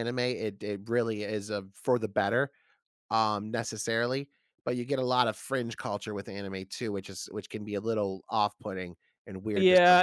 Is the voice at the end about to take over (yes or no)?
yes